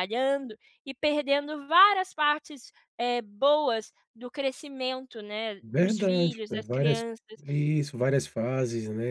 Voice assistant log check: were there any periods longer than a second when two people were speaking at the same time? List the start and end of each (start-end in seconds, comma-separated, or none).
5.6-7.0